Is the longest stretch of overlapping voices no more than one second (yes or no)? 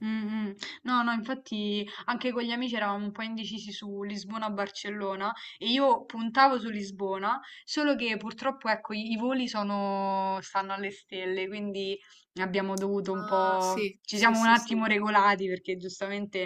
no